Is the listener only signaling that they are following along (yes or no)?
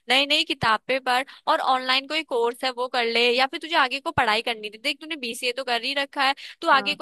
yes